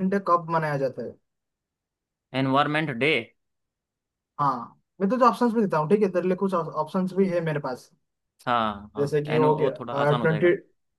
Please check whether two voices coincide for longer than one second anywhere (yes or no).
yes